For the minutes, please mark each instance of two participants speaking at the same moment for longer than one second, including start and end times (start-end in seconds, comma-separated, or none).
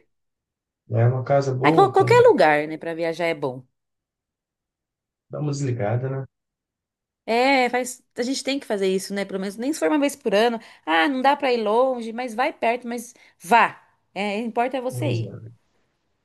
none